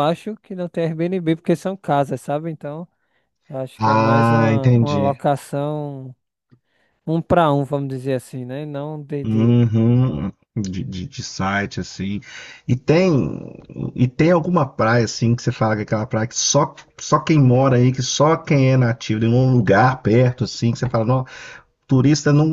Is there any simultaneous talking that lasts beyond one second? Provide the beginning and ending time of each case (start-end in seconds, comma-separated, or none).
3.8-5.2